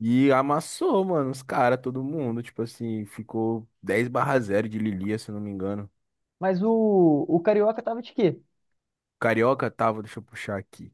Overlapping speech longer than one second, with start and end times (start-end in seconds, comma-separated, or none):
none